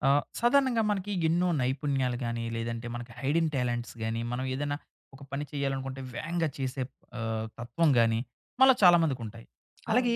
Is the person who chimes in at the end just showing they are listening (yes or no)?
yes